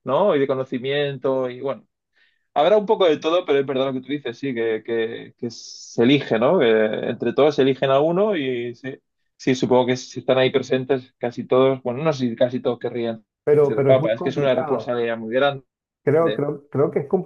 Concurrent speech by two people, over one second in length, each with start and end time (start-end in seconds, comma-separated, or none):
13.6-15.0